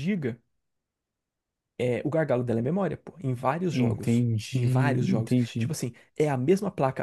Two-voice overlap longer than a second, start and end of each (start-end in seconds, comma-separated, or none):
3.7-5.7